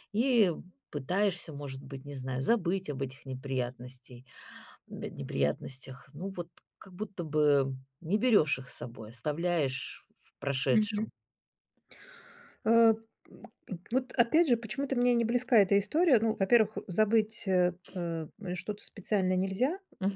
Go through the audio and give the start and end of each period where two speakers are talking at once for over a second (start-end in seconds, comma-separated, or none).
none